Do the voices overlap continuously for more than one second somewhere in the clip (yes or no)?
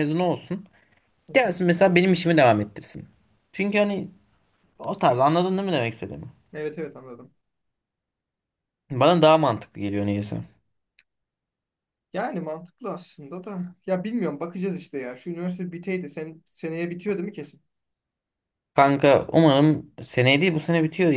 no